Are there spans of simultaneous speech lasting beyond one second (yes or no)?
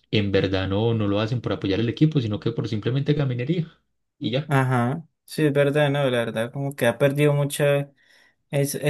no